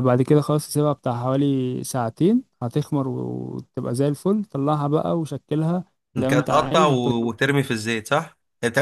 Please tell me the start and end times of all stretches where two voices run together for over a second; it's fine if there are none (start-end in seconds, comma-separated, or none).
6.2-7.7